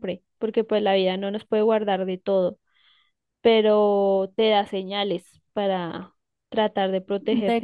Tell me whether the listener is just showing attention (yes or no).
no